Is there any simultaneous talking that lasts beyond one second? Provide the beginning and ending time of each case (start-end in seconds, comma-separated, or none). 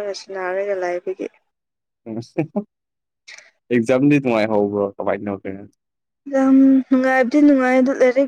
none